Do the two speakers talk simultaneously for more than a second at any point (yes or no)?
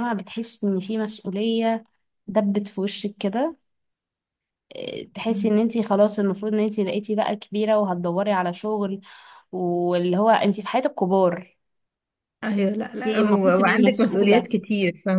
yes